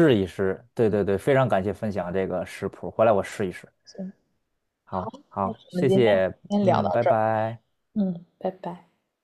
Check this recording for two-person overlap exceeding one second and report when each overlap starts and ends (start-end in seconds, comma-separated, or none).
4.9-7.2